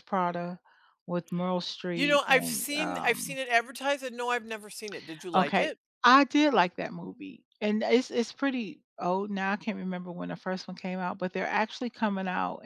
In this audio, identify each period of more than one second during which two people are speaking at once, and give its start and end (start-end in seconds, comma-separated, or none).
1.9-3.4